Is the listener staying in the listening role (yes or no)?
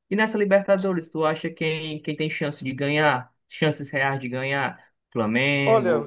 yes